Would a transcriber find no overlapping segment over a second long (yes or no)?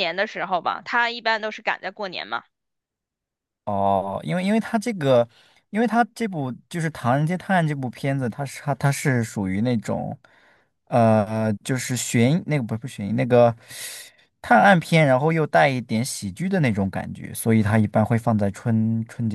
yes